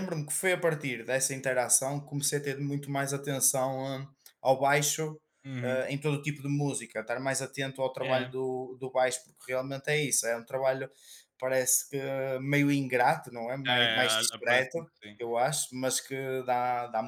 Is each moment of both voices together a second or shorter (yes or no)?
no